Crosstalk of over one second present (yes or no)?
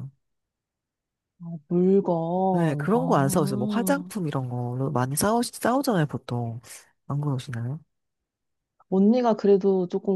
yes